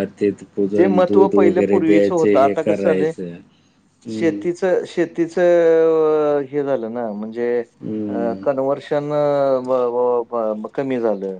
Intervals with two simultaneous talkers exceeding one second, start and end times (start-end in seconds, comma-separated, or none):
0.8-2.6